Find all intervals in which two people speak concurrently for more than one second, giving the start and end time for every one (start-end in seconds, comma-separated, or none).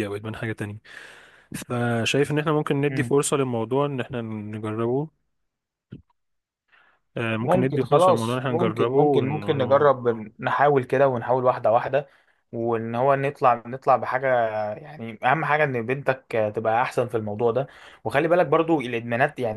7.4-9.9